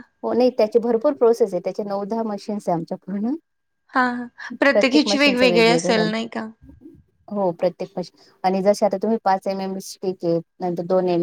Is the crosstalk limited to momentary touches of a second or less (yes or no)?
no